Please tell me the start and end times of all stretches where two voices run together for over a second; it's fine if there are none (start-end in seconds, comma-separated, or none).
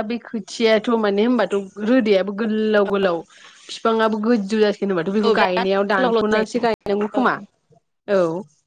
5.1-6.7